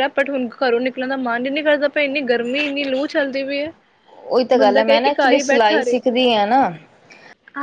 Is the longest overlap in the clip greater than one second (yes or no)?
yes